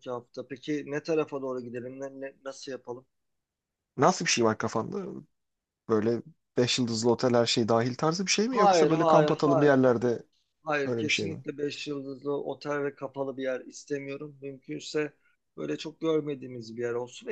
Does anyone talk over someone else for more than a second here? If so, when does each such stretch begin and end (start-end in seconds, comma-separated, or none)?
8.5-9.7